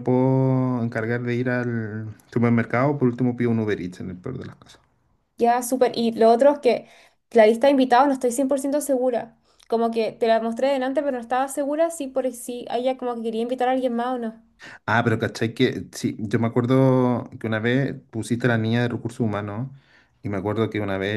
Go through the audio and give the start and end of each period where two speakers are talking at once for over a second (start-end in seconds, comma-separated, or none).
none